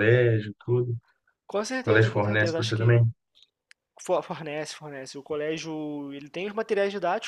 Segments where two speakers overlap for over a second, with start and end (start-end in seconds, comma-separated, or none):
1.5-3.0